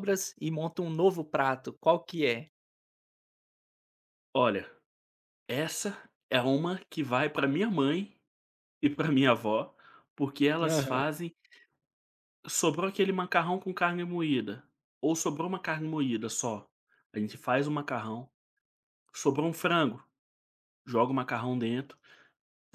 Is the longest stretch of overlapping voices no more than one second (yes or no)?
yes